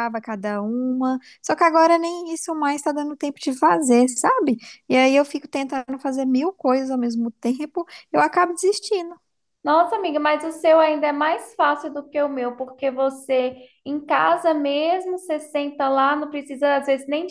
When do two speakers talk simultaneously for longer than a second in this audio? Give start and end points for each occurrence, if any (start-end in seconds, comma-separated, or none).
none